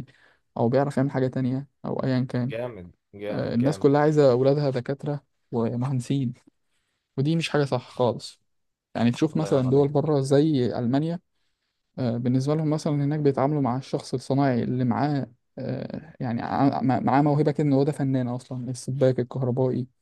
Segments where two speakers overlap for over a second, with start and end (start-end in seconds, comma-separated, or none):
none